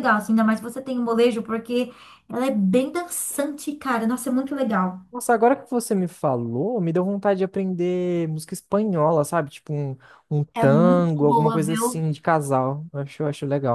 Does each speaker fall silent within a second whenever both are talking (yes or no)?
no